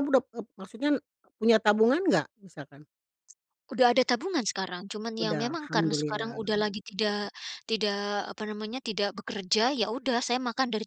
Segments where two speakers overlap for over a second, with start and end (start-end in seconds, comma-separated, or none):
5.2-6.5